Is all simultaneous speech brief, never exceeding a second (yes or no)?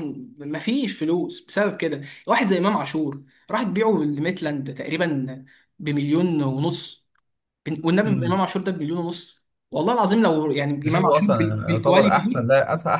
no